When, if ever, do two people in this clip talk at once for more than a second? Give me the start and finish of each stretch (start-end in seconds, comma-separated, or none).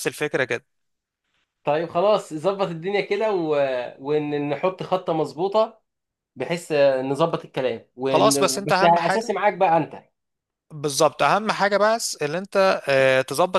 8.1-9.4